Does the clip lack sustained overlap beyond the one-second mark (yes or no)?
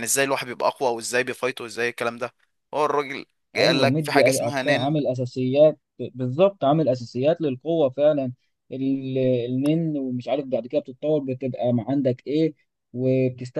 no